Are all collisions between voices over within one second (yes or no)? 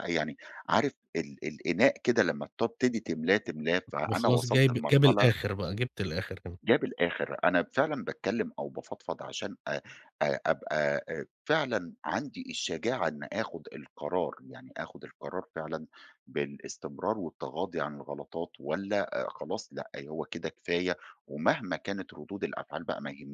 no